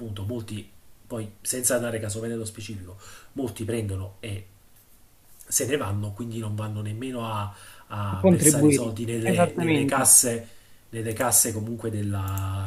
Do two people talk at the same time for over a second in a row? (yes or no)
yes